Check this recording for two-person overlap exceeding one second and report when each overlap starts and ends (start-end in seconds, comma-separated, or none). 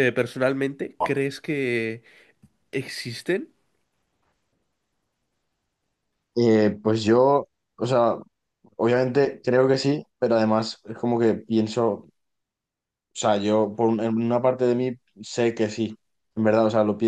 none